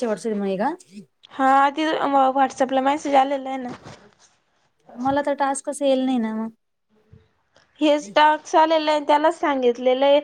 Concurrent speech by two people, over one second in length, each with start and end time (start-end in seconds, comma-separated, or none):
none